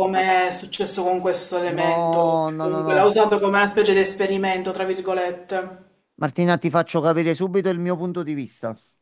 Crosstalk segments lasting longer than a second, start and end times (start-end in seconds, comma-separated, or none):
1.6-3.1